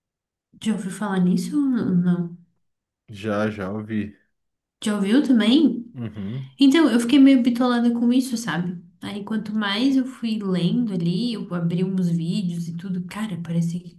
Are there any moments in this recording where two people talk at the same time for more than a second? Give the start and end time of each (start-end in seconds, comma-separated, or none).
none